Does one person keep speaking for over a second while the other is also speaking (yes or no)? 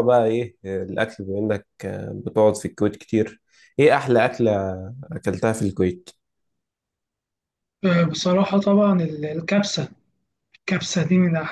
no